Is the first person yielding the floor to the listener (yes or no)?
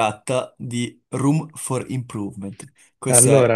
no